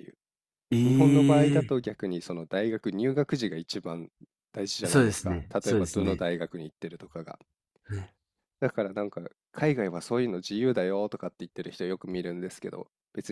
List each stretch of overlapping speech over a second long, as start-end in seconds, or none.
4.8-6.2